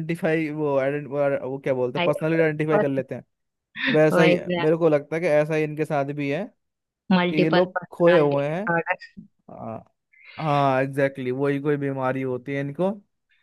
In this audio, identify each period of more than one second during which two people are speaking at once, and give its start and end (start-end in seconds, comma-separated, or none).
7.3-8.6